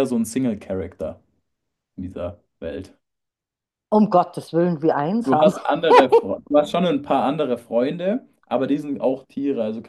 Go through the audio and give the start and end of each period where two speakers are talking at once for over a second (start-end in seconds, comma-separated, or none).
none